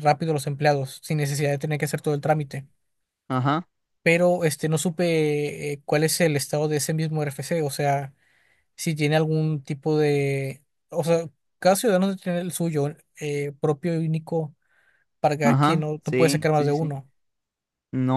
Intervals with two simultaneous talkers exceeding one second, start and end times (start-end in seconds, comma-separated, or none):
15.4-16.9